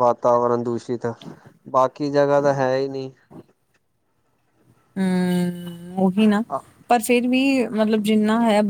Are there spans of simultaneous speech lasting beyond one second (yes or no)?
no